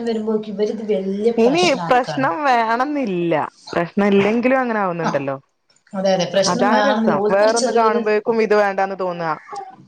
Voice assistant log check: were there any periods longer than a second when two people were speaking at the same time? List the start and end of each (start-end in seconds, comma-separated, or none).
6.5-8.0